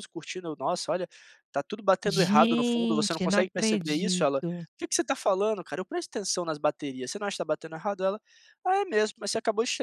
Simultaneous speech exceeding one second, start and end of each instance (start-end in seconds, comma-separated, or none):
2.0-4.4